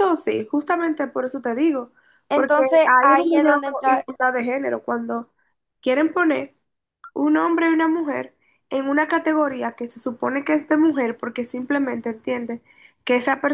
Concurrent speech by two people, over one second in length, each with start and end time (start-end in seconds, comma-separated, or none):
2.3-4.1